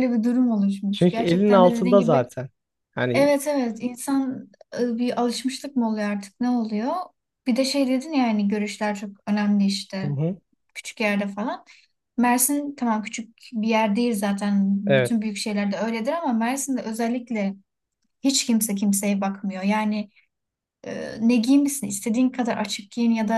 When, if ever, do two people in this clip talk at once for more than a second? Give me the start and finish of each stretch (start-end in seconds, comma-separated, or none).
0.9-2.2